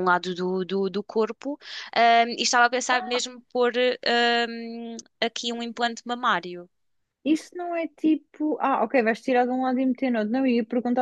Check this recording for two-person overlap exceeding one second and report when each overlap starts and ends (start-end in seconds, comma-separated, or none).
none